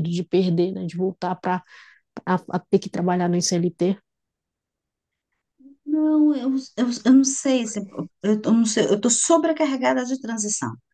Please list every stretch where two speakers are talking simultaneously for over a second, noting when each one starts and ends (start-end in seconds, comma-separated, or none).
none